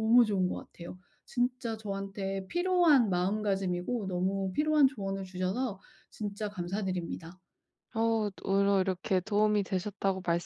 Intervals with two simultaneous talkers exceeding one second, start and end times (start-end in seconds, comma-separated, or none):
none